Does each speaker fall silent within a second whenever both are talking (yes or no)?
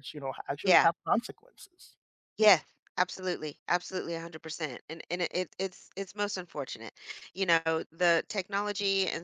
yes